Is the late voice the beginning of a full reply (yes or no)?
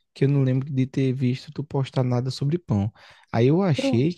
no